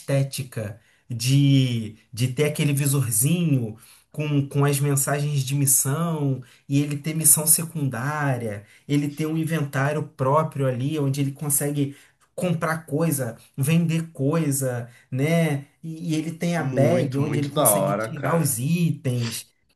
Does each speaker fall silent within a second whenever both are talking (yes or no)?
no